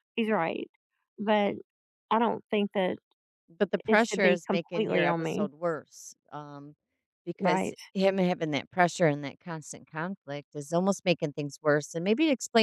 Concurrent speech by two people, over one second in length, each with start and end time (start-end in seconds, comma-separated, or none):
3.9-5.5